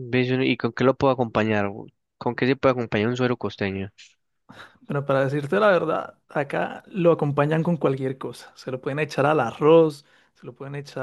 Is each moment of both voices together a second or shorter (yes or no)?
yes